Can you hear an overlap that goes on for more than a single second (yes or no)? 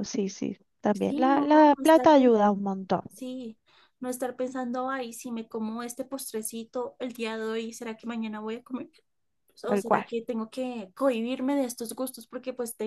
yes